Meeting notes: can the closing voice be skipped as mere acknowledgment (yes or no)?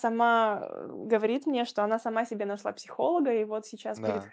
yes